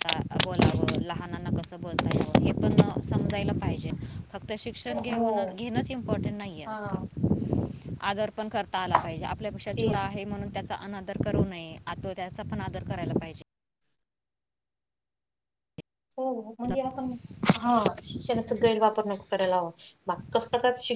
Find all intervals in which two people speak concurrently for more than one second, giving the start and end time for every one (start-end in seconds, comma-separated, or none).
none